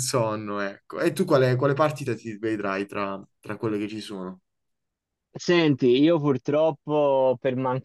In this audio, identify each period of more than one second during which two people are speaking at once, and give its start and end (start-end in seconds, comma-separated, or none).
none